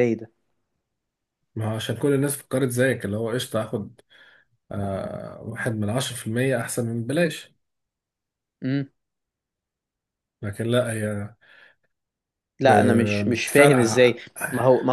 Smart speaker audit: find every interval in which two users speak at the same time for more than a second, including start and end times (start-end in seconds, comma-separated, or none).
12.6-14.2